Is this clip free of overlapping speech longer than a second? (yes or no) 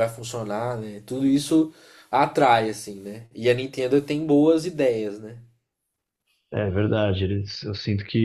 yes